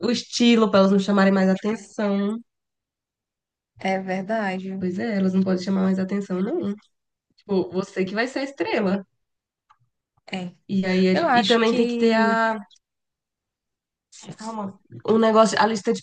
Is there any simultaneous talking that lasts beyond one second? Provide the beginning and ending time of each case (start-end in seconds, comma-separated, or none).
11.1-12.4